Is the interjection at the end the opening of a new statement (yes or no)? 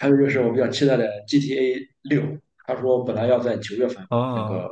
no